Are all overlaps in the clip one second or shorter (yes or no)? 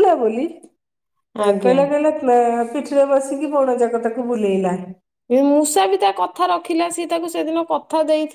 yes